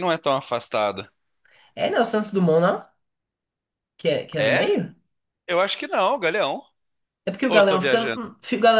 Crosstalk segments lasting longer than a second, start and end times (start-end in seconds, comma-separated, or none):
none